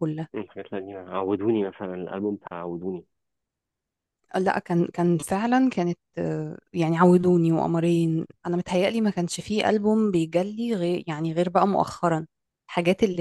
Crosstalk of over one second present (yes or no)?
no